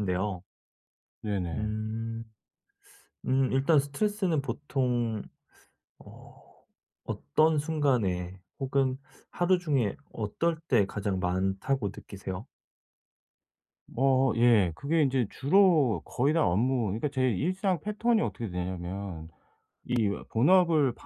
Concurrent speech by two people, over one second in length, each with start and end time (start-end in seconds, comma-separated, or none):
none